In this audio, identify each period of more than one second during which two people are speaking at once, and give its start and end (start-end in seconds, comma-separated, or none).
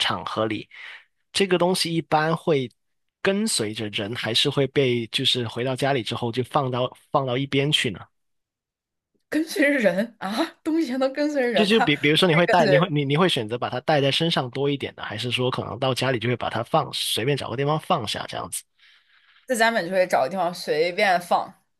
11.5-12.9